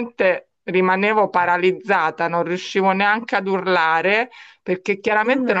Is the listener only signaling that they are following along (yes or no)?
yes